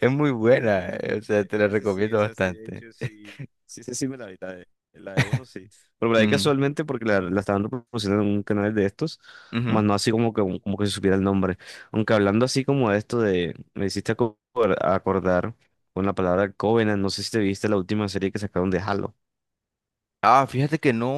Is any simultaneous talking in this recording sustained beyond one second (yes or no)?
yes